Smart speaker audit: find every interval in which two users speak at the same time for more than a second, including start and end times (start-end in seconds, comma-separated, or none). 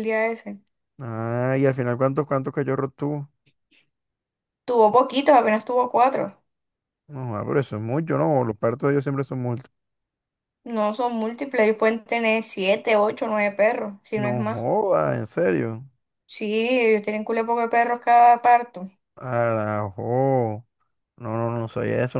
none